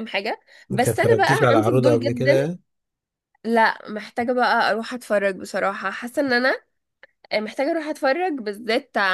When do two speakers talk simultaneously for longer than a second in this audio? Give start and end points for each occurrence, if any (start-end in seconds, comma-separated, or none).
0.7-2.3